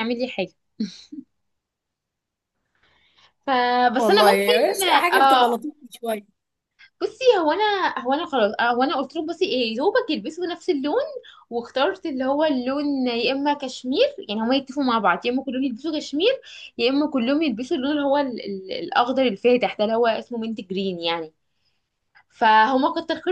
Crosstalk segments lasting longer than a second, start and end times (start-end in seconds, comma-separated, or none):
4.0-5.6